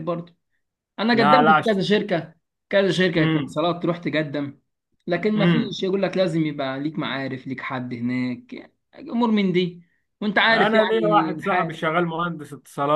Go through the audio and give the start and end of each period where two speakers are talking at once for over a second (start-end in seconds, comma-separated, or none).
10.5-11.7